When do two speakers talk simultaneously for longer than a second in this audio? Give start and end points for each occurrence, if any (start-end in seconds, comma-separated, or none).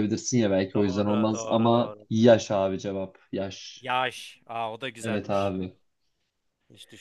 0.7-2.1